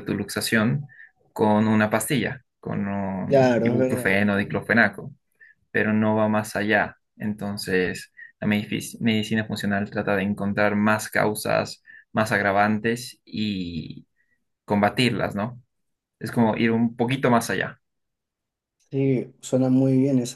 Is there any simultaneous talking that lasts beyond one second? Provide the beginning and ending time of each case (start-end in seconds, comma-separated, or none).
3.3-4.5